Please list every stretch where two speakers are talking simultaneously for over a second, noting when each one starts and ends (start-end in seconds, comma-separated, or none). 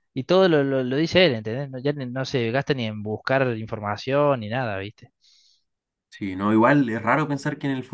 none